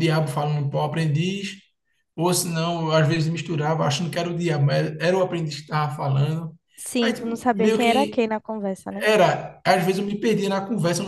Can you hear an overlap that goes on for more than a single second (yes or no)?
yes